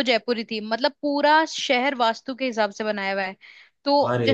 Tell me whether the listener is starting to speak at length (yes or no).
no